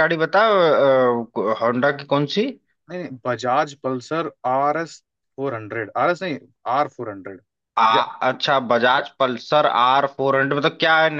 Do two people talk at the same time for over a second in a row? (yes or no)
no